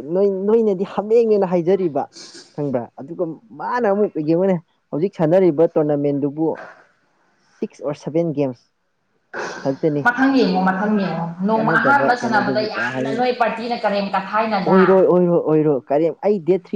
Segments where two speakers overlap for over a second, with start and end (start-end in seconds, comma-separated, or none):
11.5-13.2